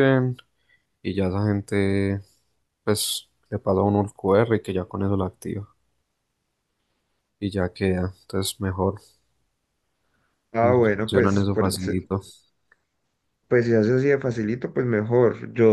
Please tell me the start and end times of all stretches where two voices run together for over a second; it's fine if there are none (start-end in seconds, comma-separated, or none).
10.6-12.0